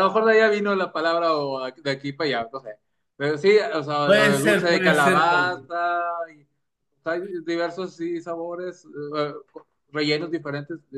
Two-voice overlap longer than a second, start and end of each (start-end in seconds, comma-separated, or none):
4.0-5.7